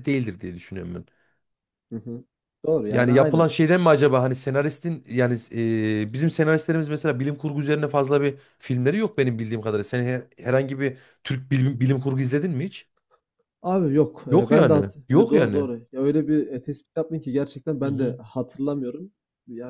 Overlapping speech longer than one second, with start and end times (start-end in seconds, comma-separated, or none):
14.3-15.7